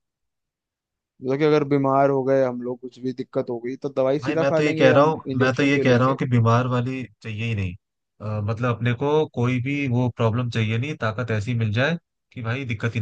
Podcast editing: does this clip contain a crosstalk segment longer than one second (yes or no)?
yes